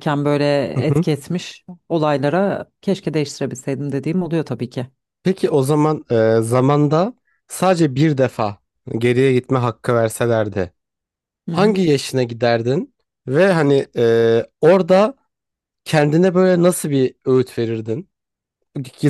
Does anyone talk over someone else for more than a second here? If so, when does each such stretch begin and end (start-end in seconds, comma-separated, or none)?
none